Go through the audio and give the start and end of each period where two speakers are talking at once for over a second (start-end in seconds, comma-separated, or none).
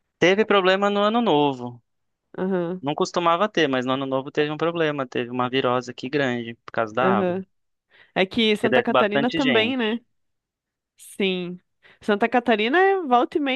8.6-9.8